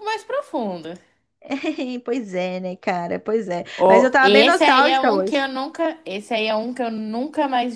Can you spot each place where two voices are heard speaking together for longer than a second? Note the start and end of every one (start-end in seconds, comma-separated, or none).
3.8-5.5